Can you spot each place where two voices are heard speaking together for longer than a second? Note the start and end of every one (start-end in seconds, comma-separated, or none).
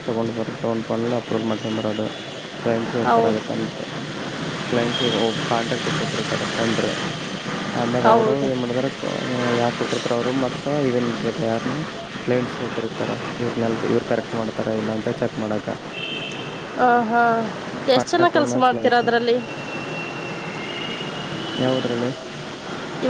none